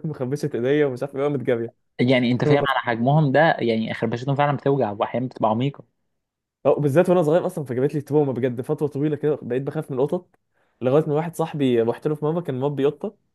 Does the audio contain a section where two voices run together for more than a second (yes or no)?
no